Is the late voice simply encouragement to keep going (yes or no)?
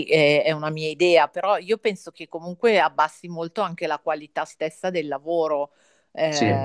no